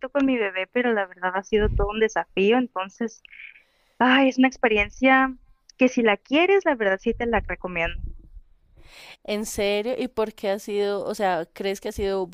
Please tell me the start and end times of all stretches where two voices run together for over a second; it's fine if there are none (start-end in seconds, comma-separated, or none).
none